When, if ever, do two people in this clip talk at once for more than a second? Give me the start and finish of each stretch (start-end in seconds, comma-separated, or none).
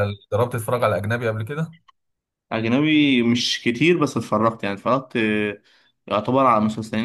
none